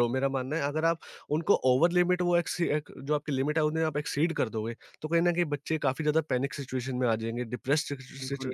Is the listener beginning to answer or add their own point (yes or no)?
yes